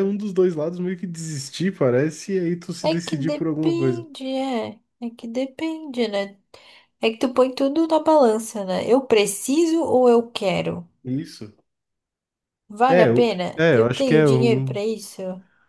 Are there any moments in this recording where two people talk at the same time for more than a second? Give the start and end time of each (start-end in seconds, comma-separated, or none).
2.8-4.1, 12.9-14.8